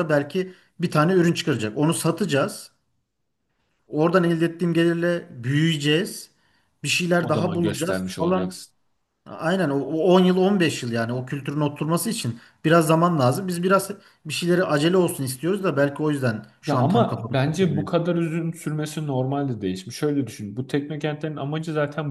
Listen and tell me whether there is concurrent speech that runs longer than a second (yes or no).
yes